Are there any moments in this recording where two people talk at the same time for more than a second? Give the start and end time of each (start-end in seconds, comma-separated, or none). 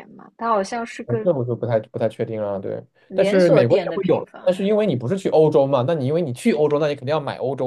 3.1-4.7